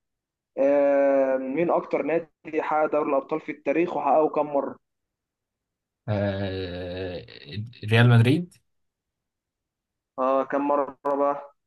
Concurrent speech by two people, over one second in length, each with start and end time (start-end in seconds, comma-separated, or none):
none